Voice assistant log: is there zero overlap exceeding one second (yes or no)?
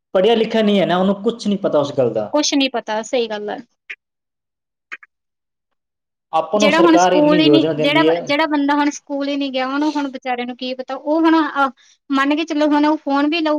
no